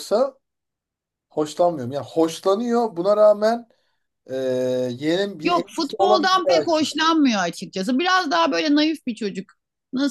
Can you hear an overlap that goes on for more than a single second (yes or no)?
yes